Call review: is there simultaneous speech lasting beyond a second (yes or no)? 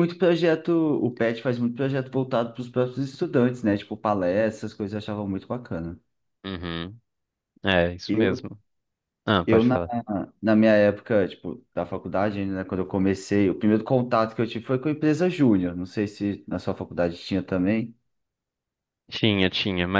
no